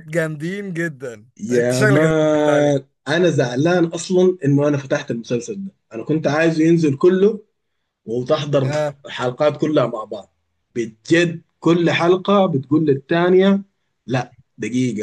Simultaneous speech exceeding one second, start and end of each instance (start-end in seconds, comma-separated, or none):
1.4-2.7